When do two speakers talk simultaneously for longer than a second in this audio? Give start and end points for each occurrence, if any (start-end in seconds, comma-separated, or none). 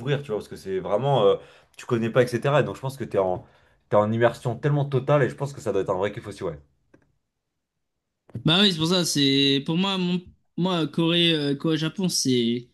none